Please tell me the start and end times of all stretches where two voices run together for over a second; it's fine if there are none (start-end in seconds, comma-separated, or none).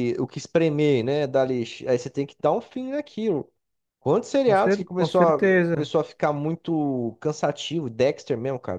4.4-5.9